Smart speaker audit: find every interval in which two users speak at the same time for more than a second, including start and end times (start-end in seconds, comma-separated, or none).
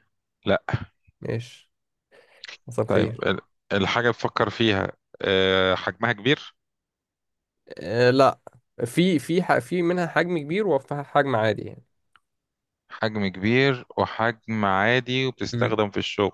none